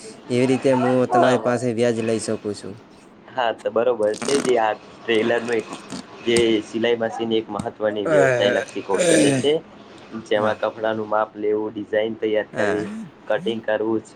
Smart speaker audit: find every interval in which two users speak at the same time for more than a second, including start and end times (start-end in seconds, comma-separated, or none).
8.1-9.5